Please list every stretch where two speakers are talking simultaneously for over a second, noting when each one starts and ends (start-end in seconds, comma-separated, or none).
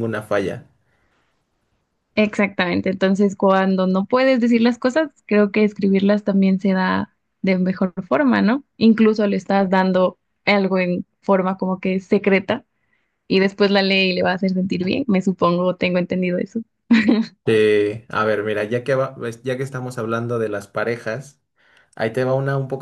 none